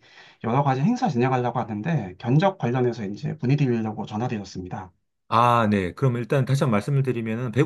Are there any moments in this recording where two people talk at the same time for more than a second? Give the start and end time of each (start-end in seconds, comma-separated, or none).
none